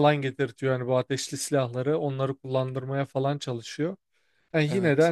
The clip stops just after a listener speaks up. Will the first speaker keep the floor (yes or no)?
yes